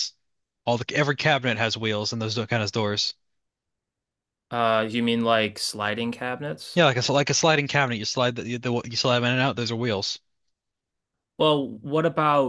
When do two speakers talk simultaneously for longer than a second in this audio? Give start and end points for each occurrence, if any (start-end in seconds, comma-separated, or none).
none